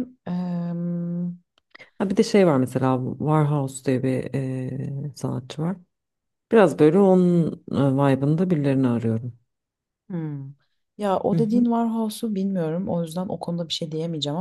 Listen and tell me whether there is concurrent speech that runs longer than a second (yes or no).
no